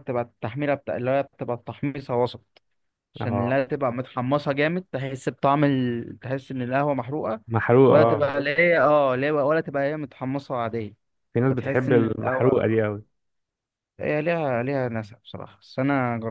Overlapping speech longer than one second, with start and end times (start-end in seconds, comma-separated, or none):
11.5-12.8